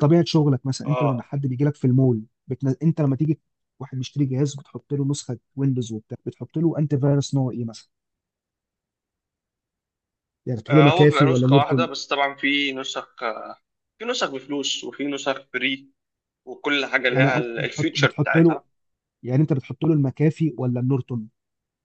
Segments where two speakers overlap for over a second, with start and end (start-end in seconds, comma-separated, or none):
10.7-11.9, 17.1-18.6